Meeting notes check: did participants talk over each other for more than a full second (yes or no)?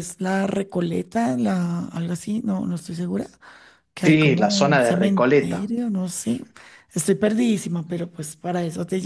yes